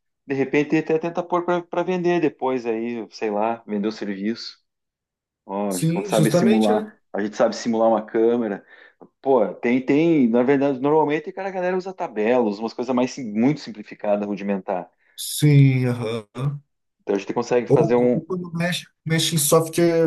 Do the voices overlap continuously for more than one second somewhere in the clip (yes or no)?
yes